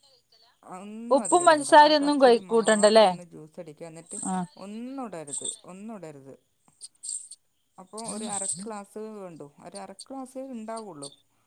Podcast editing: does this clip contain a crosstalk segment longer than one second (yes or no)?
yes